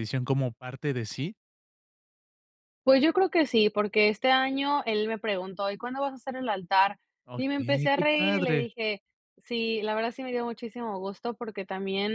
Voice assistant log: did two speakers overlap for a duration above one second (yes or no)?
yes